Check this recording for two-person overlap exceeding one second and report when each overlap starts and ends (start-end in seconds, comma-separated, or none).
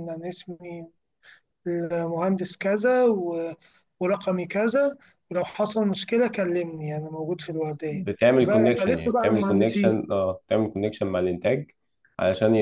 7.9-10.1